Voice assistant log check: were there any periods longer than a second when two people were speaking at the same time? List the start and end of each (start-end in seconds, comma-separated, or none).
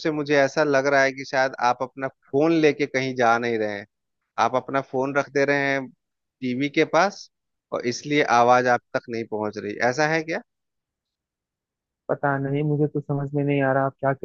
none